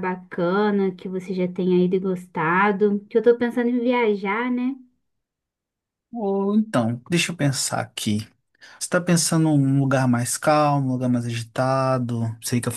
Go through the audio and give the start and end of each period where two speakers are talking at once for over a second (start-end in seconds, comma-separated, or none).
none